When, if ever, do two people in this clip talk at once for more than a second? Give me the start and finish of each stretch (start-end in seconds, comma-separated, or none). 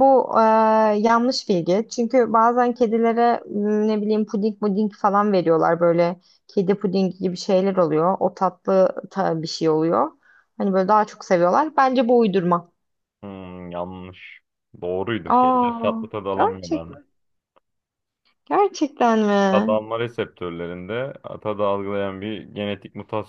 15.3-17.0